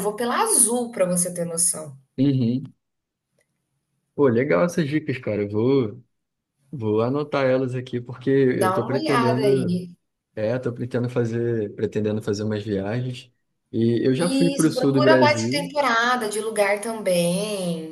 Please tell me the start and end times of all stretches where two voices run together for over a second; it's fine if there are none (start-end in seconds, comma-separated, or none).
8.5-9.8, 14.2-15.7